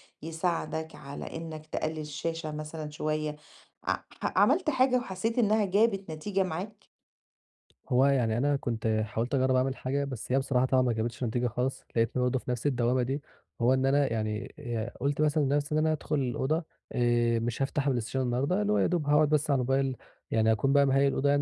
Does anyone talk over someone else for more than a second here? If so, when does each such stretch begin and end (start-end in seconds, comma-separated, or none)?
none